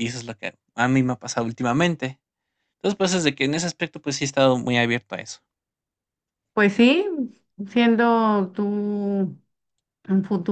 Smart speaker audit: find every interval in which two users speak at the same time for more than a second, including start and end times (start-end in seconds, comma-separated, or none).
none